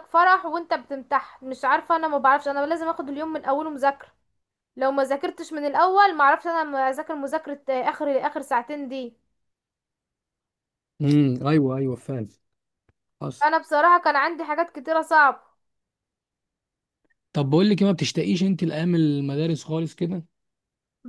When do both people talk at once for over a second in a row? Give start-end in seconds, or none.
none